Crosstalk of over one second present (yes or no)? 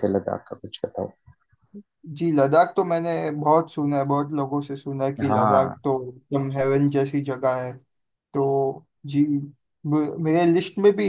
no